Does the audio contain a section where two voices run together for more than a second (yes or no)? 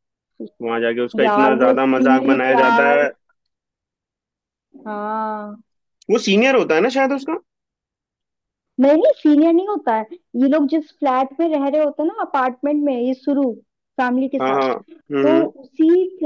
yes